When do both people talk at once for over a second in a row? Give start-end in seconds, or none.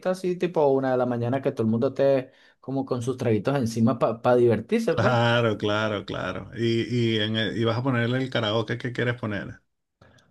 none